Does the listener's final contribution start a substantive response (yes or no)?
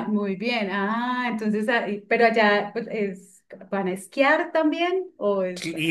yes